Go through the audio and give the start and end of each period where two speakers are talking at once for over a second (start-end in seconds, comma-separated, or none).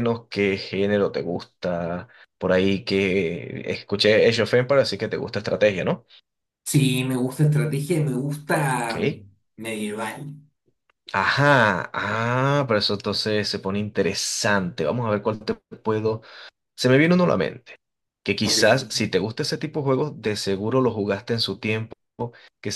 none